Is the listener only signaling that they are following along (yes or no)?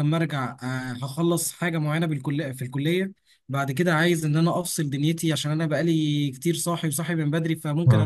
yes